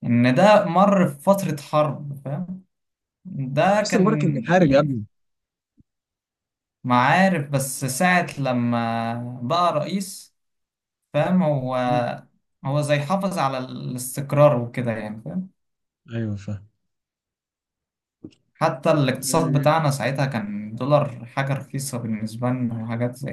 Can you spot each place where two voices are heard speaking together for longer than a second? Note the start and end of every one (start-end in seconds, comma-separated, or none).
3.7-5.0